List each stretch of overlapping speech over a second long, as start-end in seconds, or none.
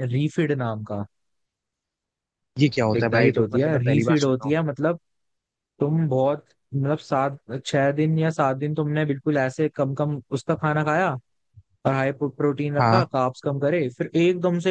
3.0-4.6